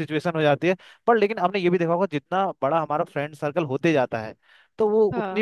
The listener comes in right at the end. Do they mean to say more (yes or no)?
no